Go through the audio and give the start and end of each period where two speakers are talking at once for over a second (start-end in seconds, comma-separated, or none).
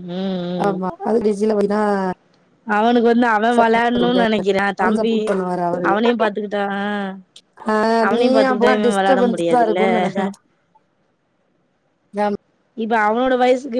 8.2-9.8